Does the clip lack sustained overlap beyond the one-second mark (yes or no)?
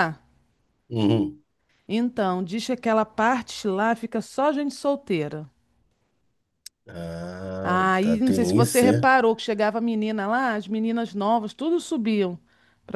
no